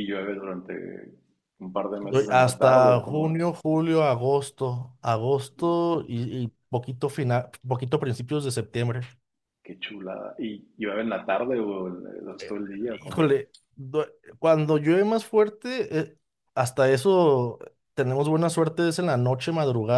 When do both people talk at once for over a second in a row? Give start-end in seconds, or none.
2.0-3.5